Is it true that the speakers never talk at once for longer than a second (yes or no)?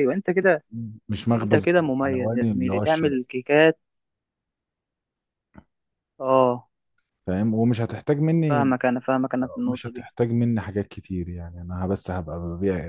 no